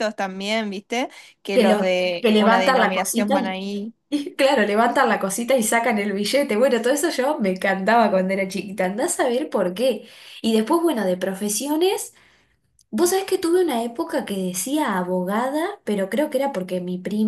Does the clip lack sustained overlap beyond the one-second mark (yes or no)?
no